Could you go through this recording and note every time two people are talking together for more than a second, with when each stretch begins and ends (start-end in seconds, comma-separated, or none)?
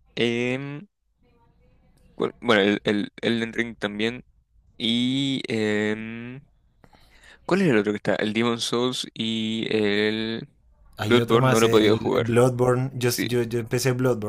11.1-12.3